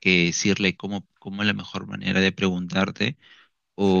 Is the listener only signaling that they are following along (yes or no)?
yes